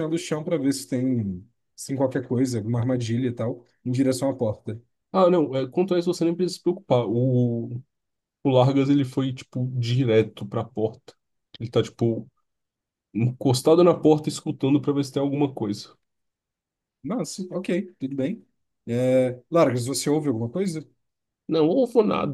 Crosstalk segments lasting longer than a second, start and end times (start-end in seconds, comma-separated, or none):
none